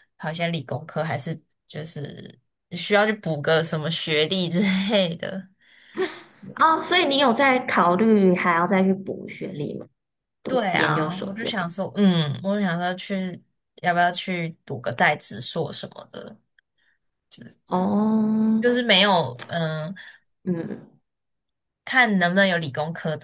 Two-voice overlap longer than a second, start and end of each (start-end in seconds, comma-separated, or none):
10.5-11.7